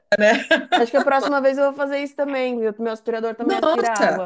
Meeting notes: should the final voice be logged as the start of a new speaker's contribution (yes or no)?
yes